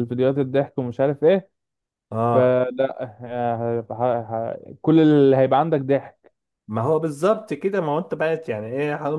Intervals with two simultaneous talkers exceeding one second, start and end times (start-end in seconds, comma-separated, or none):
none